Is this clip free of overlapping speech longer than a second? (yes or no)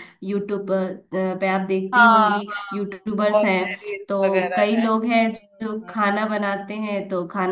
no